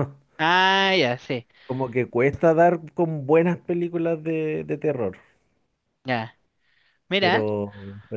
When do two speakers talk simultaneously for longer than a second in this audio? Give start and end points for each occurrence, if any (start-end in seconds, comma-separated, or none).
none